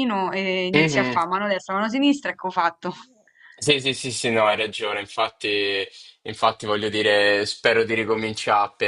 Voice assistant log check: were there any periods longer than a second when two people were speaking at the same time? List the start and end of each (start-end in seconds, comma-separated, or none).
none